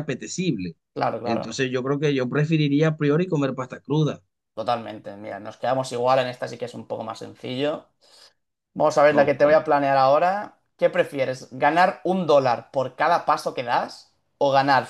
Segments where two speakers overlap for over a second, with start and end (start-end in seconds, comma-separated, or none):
none